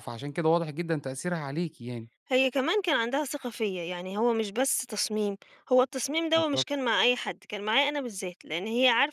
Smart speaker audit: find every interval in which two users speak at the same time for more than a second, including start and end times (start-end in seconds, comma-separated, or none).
none